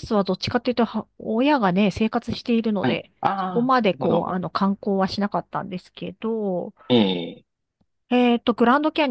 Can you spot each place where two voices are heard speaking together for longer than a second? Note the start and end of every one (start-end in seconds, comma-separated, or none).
2.8-4.3